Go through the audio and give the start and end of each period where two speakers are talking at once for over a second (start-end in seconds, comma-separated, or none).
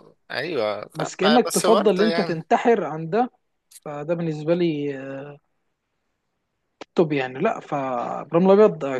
0.9-2.4